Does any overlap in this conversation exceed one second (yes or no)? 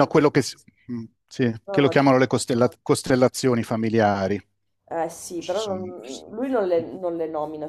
yes